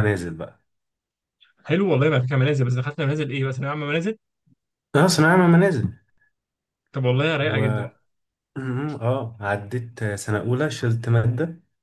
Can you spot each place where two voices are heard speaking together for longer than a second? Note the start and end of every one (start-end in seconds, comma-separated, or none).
none